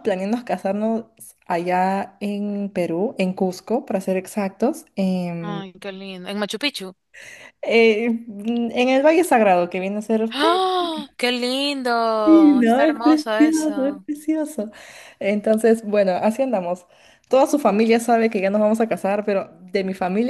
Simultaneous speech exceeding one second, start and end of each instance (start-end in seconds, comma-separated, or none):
12.2-14.1